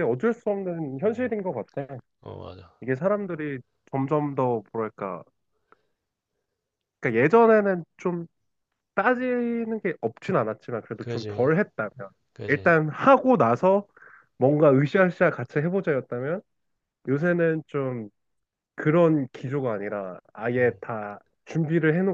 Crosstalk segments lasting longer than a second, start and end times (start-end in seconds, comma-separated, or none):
none